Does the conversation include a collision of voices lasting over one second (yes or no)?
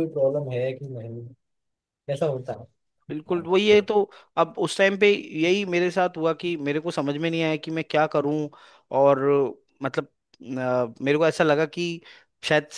no